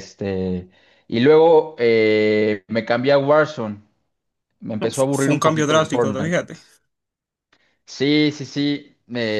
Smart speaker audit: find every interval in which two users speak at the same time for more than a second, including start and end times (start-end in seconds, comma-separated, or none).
4.8-6.3